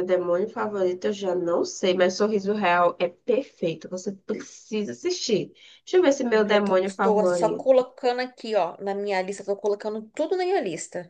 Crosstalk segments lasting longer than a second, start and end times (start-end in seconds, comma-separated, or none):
6.3-7.8